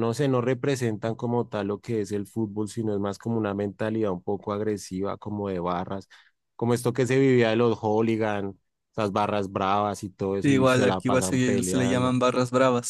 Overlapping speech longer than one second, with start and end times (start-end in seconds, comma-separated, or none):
10.4-12.1